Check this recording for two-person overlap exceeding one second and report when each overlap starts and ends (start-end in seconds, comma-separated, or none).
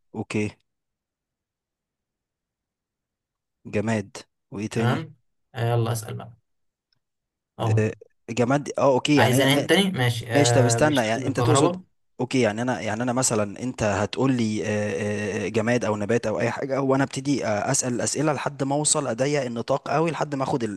10.3-11.8